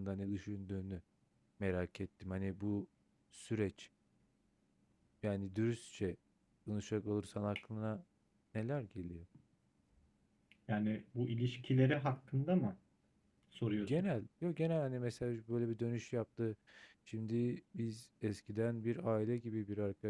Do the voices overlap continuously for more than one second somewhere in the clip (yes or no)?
no